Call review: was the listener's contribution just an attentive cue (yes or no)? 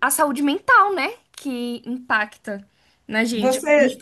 yes